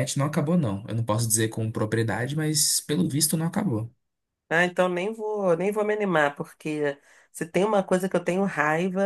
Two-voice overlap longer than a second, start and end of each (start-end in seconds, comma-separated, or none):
none